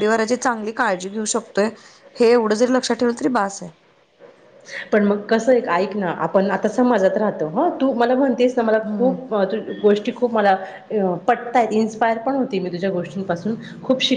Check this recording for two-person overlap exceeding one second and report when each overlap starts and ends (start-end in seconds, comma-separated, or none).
none